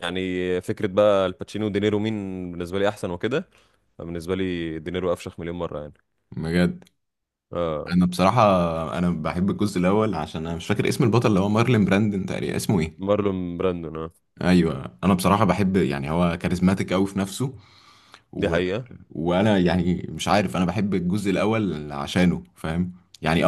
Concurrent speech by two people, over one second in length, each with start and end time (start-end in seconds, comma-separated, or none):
none